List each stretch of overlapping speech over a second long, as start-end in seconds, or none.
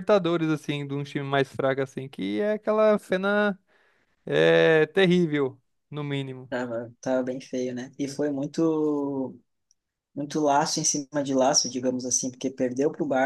none